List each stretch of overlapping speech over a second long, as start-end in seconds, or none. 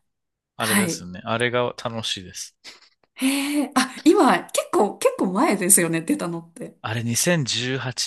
none